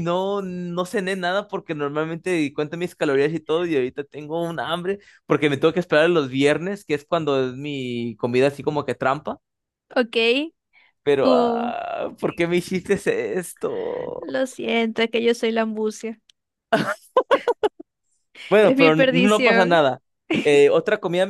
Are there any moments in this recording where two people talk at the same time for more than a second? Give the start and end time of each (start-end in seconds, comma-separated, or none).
18.6-19.8